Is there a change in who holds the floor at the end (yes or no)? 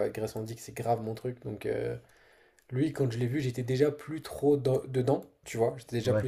no